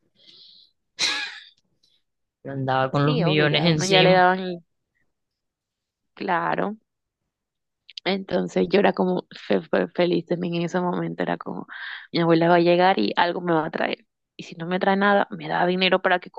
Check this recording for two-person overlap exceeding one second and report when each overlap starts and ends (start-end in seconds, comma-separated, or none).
2.9-4.2